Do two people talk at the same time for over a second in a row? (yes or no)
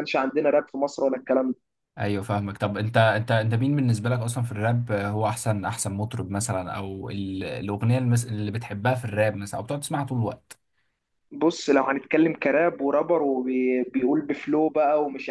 no